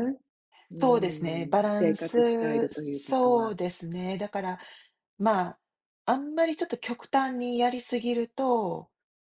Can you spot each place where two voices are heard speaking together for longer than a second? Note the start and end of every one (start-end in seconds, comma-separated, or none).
0.7-3.5